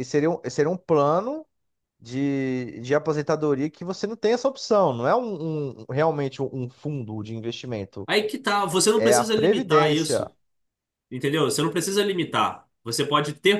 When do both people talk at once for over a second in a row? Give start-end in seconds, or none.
9.0-10.3